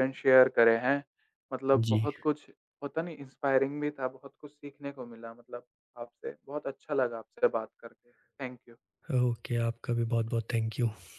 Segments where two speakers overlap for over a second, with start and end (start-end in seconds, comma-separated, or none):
none